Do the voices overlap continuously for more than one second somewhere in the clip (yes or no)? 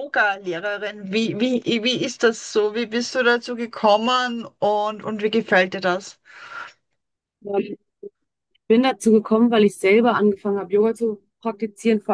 no